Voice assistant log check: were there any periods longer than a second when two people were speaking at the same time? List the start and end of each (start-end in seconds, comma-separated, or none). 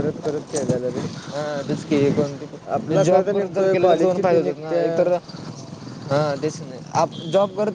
2.7-5.1